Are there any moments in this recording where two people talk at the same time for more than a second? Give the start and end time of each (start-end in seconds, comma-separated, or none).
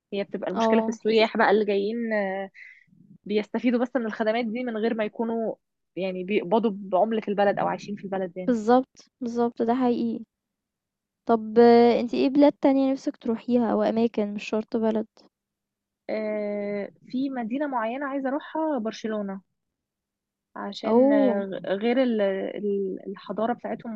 none